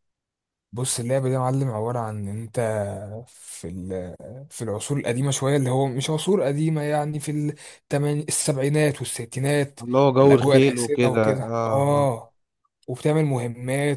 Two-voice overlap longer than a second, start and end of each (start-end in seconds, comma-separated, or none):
10.2-12.1